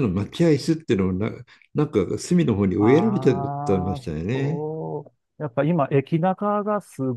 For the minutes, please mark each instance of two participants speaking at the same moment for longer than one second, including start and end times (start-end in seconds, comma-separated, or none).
2.8-4.6